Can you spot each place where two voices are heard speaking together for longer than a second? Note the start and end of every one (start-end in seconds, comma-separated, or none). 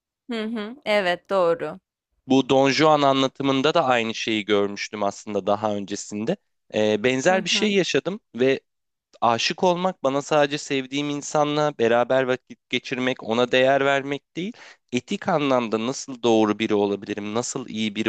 none